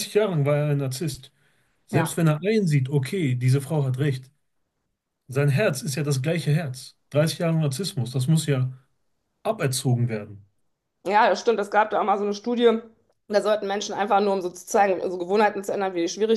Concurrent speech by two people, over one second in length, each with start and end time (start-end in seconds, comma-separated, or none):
none